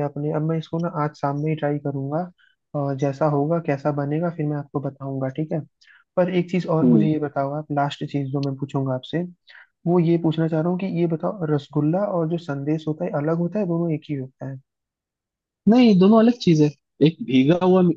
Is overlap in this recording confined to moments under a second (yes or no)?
yes